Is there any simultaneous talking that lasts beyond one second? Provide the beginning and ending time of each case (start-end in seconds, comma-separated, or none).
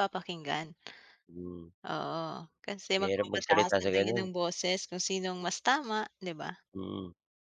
3.0-4.3